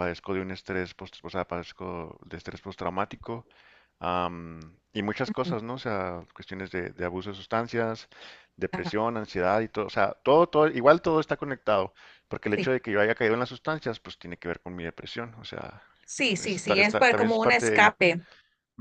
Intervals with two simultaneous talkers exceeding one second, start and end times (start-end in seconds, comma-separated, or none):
16.4-17.9